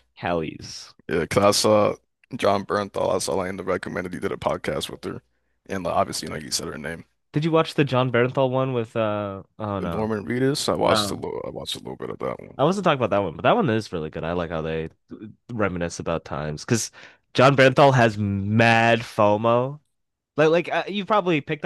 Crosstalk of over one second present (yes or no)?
no